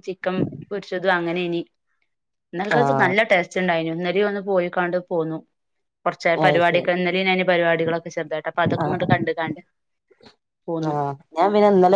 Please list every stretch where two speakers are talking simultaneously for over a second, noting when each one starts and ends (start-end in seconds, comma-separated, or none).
none